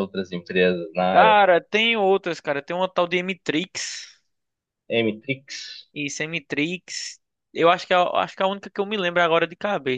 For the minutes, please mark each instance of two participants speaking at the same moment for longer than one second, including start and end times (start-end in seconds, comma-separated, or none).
none